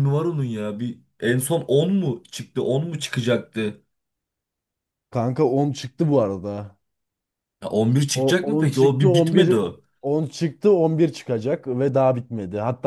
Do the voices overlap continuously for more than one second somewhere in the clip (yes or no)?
yes